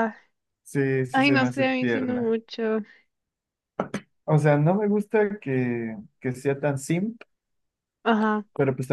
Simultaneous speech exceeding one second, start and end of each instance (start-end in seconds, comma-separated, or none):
1.1-2.4